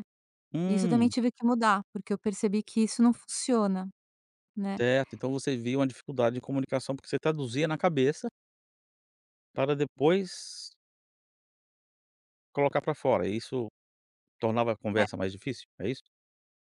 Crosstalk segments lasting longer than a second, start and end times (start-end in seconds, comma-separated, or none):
none